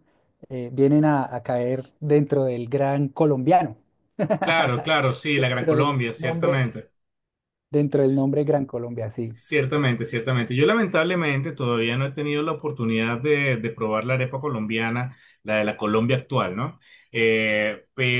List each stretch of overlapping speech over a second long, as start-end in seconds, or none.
5.3-6.7